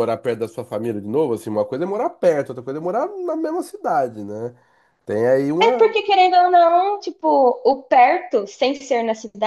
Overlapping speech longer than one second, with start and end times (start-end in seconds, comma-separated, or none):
none